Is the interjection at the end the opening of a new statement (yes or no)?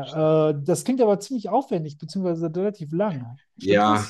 yes